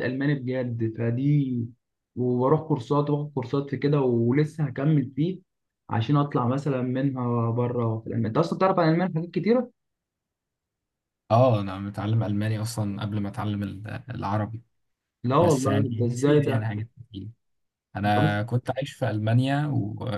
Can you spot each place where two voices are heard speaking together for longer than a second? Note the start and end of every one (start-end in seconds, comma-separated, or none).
15.4-16.7